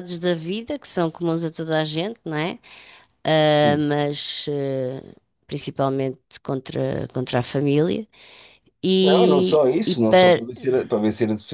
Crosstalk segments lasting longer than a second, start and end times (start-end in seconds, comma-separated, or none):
9.0-10.4